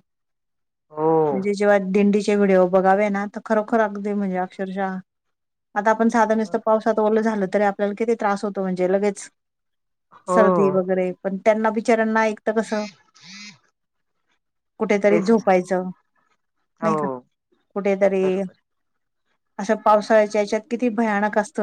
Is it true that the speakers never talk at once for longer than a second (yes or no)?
yes